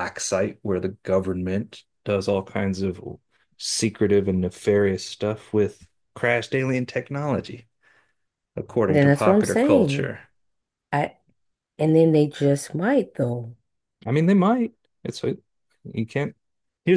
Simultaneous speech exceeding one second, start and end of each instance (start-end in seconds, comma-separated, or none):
8.9-10.1